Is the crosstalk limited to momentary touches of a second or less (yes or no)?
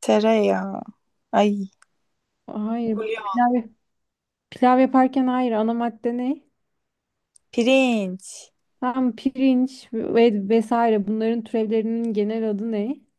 yes